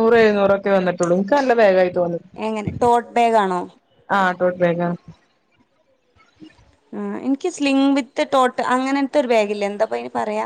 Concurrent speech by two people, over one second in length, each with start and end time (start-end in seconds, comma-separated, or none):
none